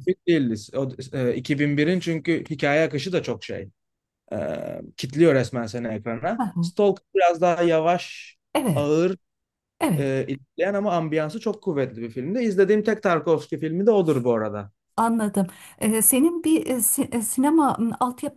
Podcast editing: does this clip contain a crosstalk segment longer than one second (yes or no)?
no